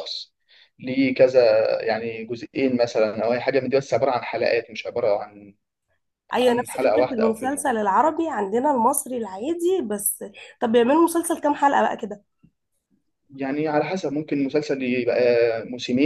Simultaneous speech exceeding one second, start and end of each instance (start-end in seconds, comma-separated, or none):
6.4-7.8